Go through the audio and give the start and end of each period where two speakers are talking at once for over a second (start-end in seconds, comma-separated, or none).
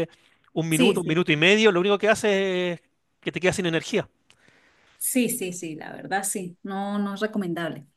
none